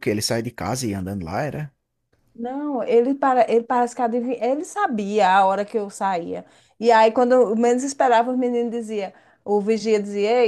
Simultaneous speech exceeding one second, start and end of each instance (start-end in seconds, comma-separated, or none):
none